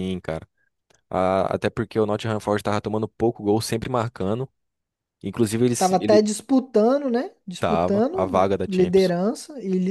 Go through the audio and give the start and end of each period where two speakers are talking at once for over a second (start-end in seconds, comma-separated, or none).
7.6-9.1